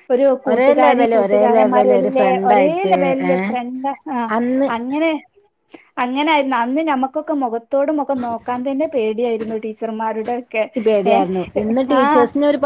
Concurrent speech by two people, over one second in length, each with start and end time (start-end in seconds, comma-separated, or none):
0.5-3.3